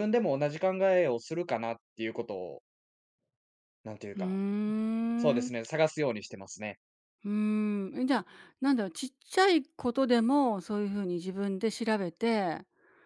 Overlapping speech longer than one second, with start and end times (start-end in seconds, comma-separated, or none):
none